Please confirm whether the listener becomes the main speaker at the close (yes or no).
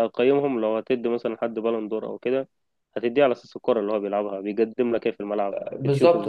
yes